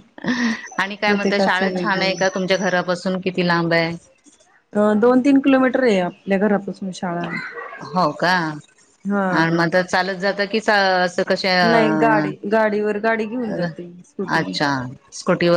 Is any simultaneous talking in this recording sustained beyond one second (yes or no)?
yes